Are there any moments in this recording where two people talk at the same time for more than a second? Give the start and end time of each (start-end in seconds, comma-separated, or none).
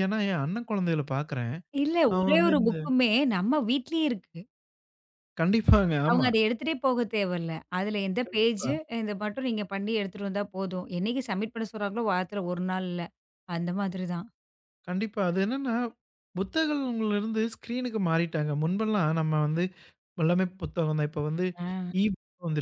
none